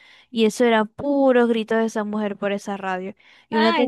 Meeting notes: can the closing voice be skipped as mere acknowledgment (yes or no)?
yes